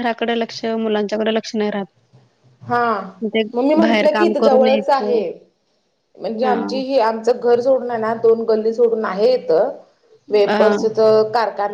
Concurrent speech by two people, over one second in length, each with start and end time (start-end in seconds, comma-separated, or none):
3.8-5.2